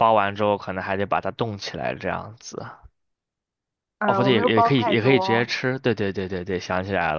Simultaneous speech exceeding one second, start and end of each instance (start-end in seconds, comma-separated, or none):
4.1-5.5